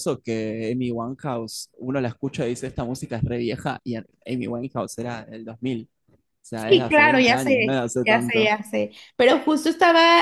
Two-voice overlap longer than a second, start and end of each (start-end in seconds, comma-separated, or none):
6.5-8.5